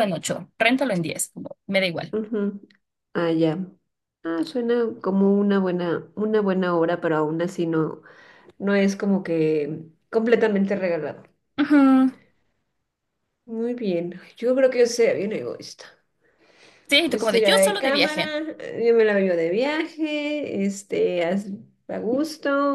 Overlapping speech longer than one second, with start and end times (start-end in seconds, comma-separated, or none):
17.1-18.4